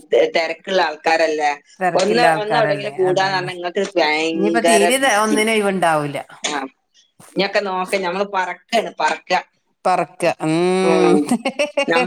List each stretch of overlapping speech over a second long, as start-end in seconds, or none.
2.0-3.5